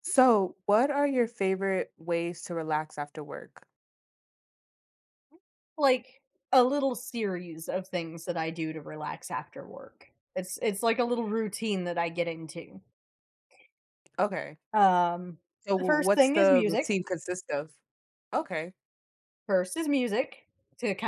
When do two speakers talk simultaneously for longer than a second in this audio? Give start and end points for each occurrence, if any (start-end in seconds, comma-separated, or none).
15.8-17.0